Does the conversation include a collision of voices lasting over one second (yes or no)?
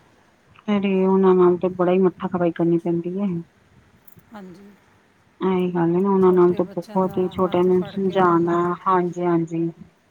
yes